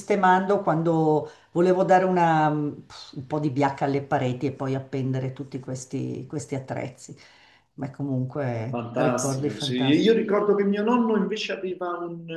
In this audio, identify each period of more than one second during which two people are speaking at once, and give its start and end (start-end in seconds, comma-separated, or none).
8.7-10.1